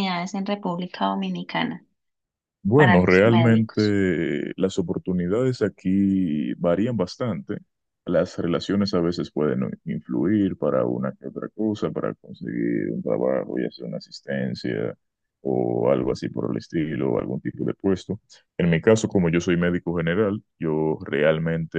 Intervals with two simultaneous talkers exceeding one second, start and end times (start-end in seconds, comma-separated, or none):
2.7-4.0